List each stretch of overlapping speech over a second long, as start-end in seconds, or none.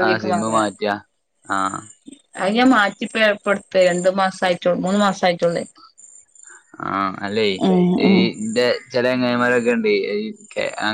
none